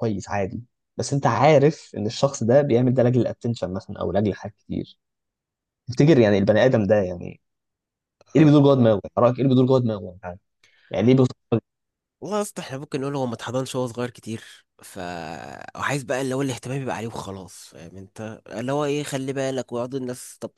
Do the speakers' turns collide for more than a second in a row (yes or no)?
no